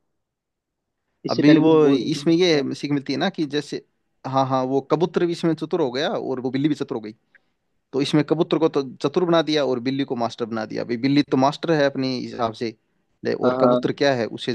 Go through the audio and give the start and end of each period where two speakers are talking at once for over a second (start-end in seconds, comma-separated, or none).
1.3-2.7